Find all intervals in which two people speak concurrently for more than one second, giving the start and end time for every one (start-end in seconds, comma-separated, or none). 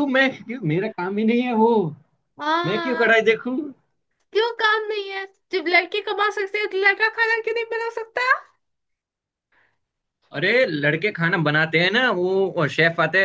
none